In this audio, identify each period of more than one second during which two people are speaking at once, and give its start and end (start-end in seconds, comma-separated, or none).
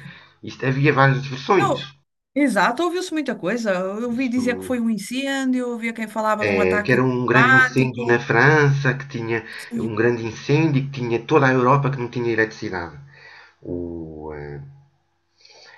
6.5-8.3